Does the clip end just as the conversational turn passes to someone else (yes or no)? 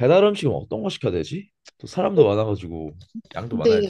yes